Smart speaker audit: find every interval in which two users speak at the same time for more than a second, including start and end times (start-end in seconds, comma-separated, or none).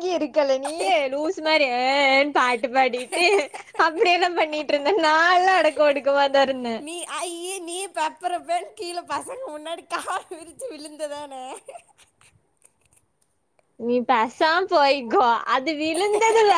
none